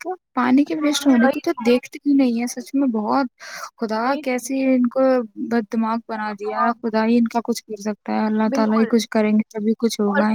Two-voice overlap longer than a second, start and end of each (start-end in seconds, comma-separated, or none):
none